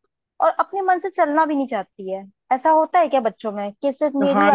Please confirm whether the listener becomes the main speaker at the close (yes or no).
yes